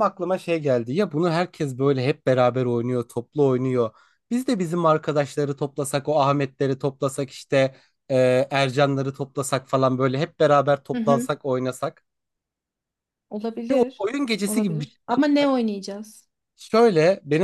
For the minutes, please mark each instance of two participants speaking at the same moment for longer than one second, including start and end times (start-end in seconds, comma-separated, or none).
13.7-15.5